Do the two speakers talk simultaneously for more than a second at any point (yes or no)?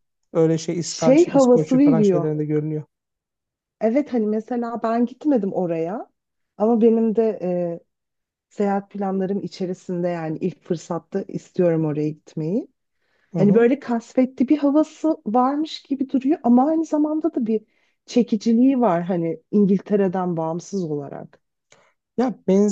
yes